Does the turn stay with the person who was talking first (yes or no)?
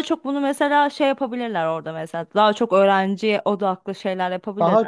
no